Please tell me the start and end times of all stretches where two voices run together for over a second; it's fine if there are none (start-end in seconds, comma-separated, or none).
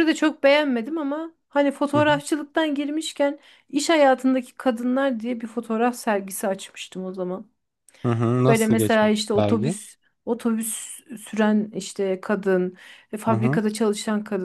8.5-9.8